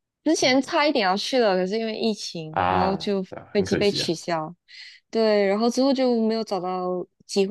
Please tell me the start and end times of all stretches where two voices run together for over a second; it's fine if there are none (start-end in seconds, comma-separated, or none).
2.5-4.1